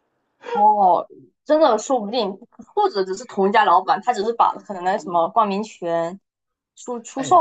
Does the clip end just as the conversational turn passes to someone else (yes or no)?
yes